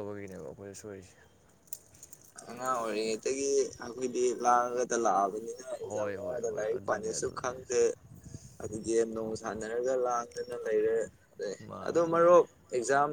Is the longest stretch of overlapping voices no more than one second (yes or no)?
no